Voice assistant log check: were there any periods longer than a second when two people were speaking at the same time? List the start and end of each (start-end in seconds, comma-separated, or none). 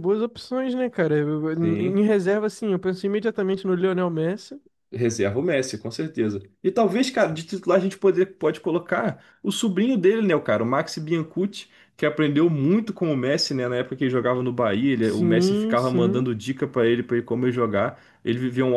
15.0-16.3